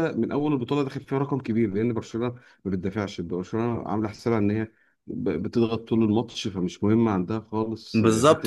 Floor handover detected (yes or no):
yes